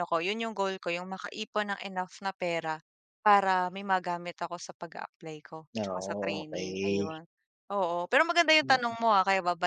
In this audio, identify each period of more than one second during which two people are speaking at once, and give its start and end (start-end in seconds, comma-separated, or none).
5.8-7.2